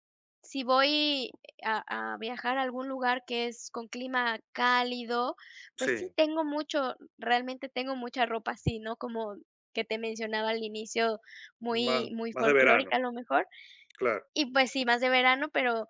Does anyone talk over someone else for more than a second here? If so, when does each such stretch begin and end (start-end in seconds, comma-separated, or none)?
11.7-13.0